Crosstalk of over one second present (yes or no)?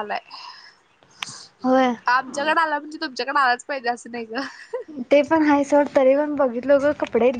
no